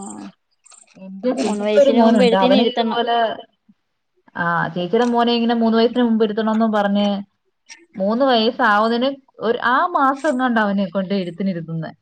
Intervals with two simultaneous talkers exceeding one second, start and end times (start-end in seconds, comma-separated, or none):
1.4-3.0